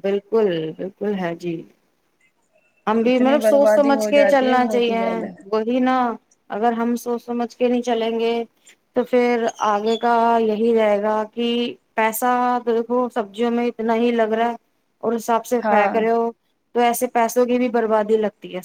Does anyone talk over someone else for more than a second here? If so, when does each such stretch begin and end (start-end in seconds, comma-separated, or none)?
3.1-5.0